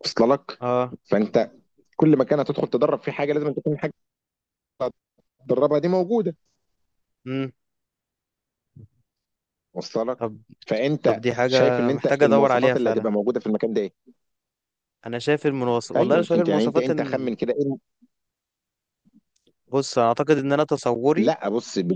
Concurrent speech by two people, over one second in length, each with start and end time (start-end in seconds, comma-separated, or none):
11.0-13.1, 16.0-17.3